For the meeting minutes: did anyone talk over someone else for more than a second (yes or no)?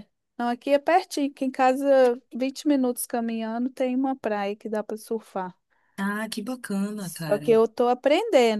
no